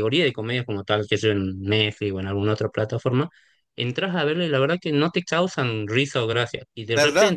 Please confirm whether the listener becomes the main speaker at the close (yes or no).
no